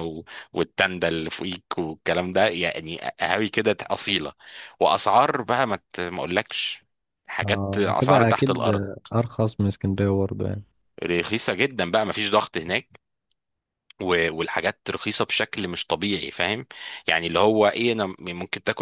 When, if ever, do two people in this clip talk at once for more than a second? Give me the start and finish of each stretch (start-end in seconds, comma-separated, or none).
7.4-8.7